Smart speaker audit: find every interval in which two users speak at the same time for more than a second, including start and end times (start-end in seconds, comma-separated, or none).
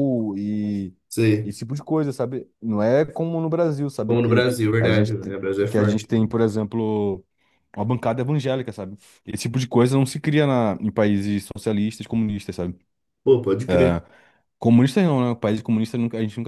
4.1-6.3